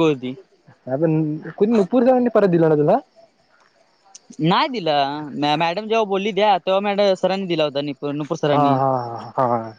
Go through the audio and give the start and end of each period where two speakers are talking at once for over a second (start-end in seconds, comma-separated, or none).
none